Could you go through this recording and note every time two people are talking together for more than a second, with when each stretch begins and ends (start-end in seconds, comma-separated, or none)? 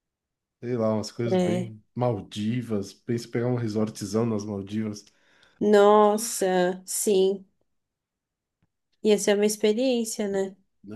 none